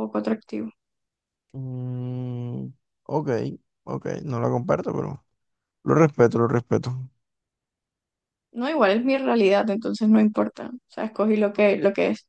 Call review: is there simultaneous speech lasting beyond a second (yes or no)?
no